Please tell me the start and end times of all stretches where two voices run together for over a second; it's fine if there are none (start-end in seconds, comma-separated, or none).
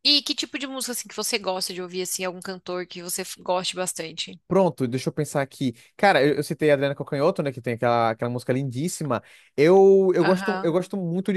none